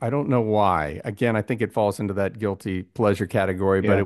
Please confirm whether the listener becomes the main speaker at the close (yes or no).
no